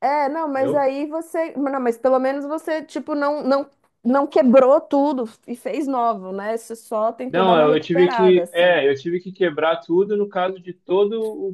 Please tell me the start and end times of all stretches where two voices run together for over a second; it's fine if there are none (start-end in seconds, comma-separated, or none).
7.3-8.8